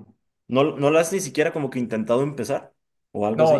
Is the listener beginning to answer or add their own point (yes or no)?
yes